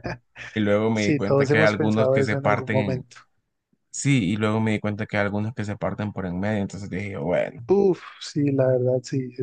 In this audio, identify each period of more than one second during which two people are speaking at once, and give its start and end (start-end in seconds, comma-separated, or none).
0.9-3.1